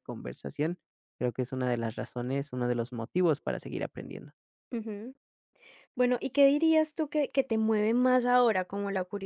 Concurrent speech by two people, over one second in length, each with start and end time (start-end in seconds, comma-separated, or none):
none